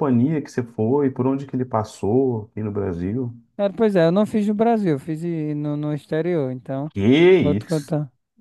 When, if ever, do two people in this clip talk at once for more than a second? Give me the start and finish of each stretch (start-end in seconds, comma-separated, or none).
none